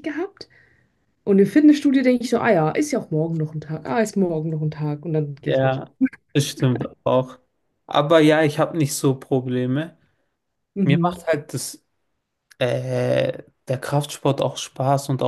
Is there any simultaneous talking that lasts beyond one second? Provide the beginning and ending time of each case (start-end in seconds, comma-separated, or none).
none